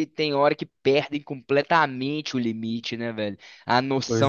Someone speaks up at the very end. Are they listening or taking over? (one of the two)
listening